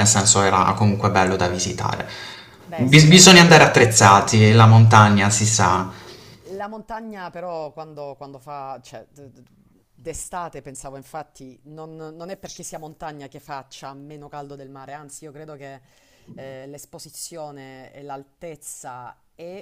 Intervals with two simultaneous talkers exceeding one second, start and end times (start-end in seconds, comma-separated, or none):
2.7-4.1